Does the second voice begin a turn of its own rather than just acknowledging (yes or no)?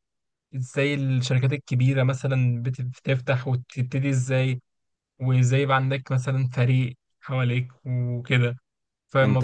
yes